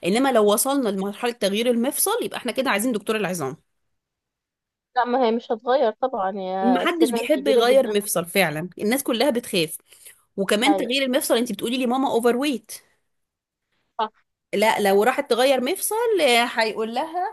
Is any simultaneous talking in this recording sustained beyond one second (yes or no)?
yes